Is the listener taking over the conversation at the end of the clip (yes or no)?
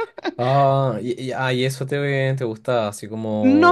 yes